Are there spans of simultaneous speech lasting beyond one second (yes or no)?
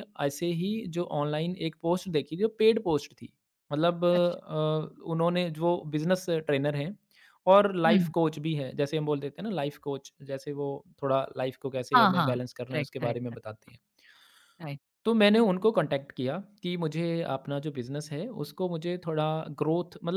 yes